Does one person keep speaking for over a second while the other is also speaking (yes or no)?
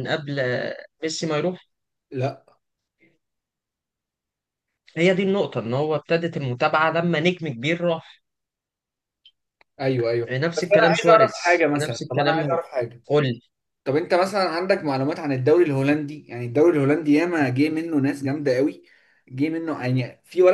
yes